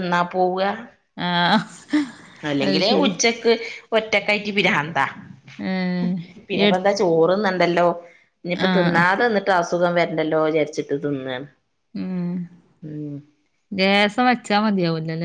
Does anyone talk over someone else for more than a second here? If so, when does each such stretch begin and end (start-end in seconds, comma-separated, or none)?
none